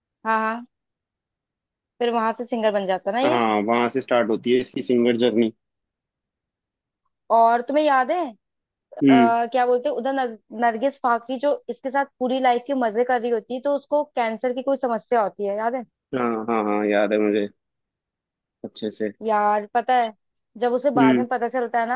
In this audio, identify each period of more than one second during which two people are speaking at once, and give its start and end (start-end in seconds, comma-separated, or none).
none